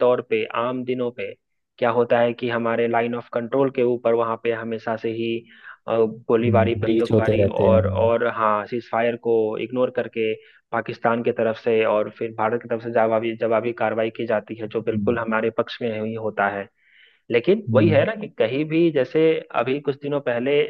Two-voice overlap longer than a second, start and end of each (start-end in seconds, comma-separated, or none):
6.8-8.1